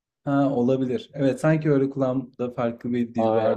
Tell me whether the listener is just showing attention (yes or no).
no